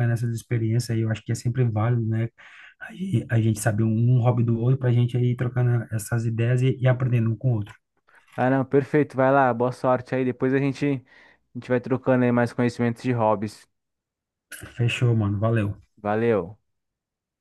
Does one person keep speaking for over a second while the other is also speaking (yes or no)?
no